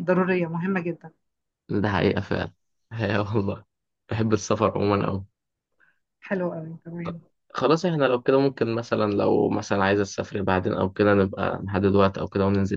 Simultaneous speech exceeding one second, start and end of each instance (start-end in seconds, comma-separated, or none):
none